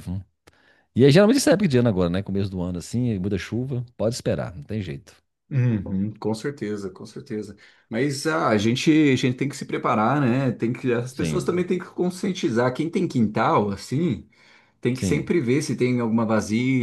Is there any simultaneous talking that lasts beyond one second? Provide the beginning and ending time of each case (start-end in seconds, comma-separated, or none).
none